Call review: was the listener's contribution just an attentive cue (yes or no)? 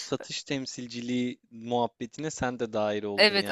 no